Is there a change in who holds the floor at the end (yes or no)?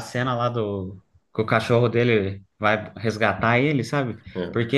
no